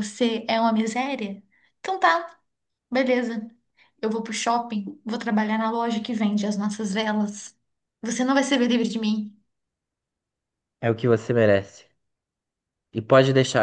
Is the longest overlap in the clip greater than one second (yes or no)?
no